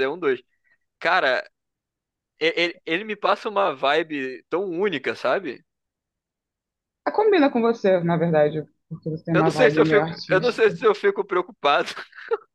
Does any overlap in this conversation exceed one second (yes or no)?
yes